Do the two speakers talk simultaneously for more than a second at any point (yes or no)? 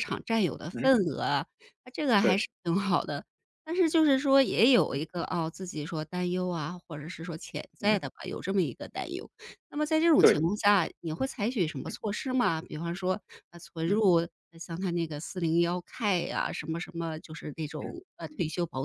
no